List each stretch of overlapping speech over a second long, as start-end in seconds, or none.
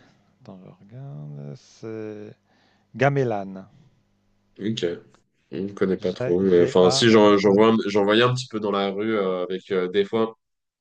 6.0-7.6